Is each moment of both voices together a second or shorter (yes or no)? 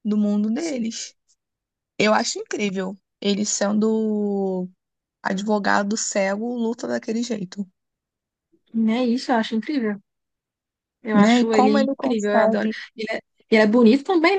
no